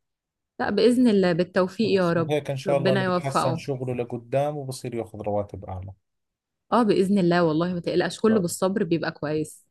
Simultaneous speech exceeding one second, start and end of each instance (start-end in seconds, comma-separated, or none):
1.8-3.6